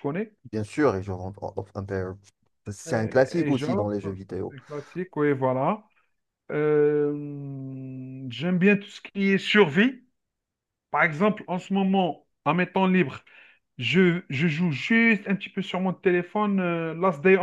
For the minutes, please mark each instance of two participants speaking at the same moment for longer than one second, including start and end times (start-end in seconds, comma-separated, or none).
2.9-4.5